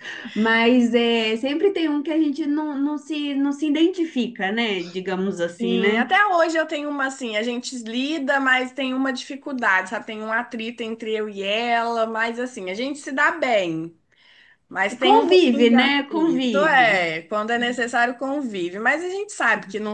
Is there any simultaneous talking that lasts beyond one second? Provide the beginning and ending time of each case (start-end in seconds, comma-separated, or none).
15.0-17.1